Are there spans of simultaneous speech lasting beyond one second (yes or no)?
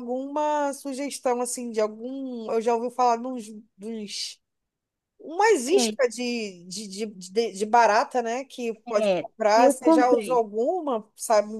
yes